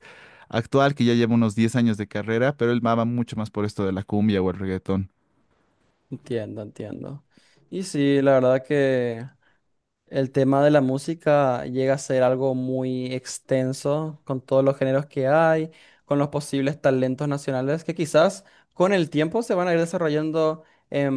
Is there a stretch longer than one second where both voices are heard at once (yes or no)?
no